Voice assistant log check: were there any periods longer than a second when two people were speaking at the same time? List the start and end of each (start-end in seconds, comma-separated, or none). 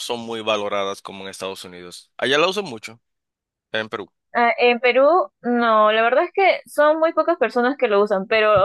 none